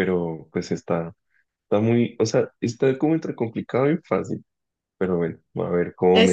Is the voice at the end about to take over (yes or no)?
yes